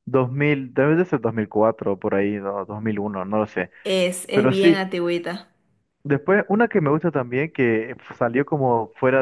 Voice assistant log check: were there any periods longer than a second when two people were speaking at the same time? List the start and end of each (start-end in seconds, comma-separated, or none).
none